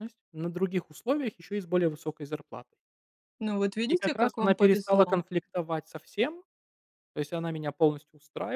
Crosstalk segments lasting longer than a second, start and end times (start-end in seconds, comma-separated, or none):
3.9-5.2